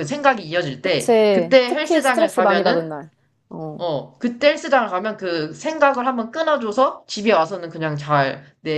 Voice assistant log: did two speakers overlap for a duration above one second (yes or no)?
yes